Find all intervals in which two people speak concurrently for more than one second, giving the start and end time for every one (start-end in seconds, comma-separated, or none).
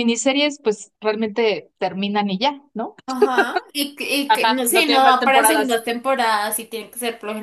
4.3-5.8